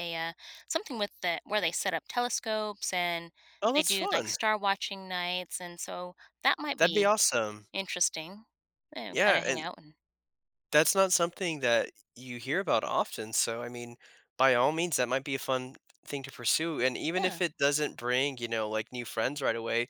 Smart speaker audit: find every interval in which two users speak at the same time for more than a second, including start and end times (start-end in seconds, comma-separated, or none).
none